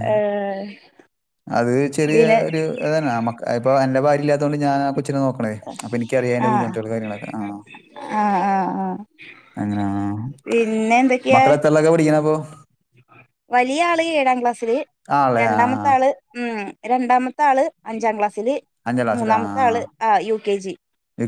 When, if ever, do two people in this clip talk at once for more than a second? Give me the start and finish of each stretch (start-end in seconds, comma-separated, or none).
none